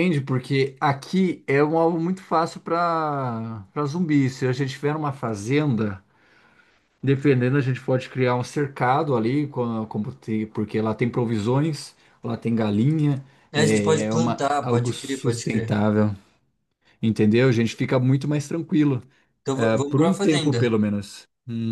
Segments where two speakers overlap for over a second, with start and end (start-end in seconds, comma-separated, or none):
13.5-15.8, 19.5-20.8